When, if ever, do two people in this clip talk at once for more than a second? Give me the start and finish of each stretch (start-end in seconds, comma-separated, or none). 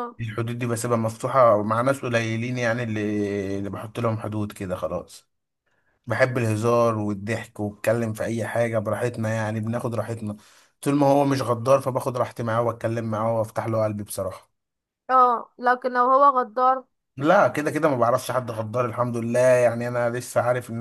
none